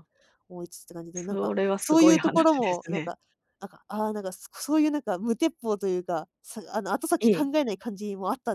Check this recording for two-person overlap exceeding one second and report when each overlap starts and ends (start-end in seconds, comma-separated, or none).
1.1-3.1